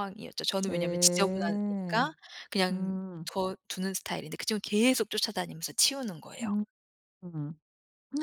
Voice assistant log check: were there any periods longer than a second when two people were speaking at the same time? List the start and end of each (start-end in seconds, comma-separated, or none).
0.6-2.1